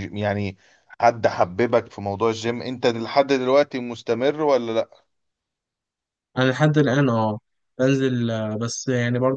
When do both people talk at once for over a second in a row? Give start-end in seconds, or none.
none